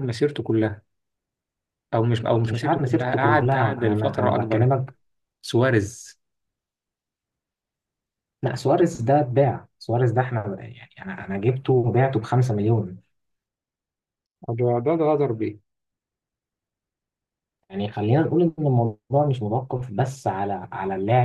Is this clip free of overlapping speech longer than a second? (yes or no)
no